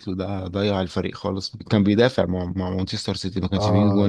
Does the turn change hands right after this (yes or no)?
yes